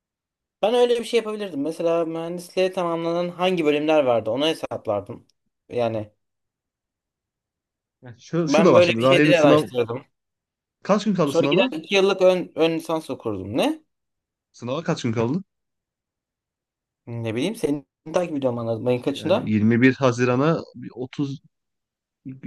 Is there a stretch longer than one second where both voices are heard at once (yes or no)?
yes